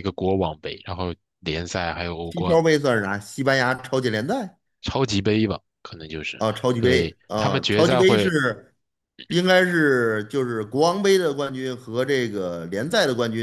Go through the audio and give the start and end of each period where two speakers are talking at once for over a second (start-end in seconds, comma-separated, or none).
6.4-8.3